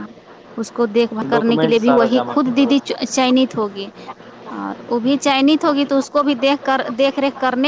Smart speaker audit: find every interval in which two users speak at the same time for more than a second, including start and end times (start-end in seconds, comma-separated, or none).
1.3-3.0